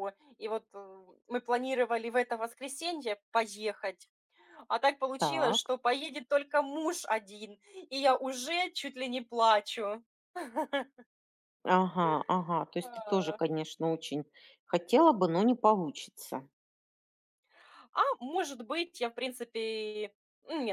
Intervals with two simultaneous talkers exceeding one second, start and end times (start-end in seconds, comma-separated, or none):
none